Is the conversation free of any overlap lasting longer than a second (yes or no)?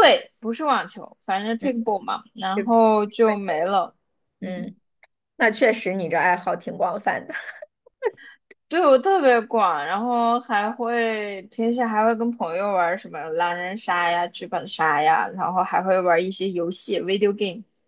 no